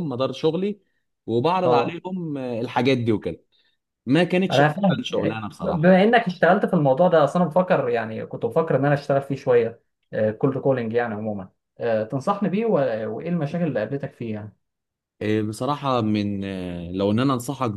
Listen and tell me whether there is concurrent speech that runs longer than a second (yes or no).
yes